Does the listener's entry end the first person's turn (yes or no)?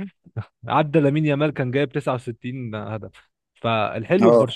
no